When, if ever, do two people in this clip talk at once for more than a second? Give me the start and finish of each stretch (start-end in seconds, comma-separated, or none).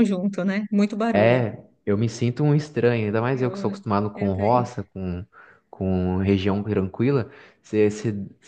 3.3-4.7